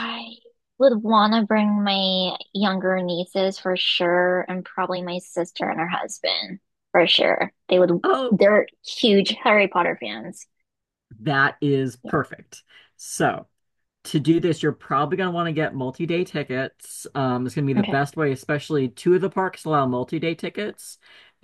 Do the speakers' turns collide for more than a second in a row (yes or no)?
no